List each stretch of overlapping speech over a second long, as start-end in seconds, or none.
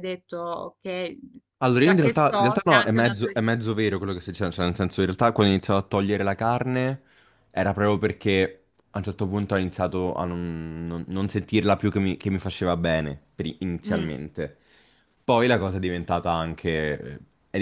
1.7-3.4